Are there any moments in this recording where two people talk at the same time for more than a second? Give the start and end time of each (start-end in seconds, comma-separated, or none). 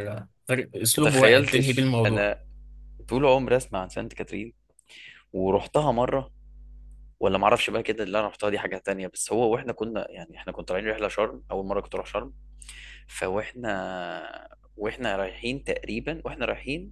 1.0-2.3